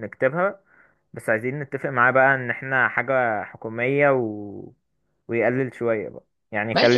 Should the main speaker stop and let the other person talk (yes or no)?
yes